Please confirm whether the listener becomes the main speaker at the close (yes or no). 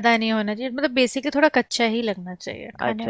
no